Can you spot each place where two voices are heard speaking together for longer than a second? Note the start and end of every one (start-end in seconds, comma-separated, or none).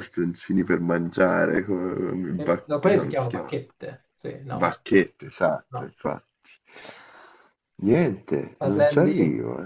2.3-3.6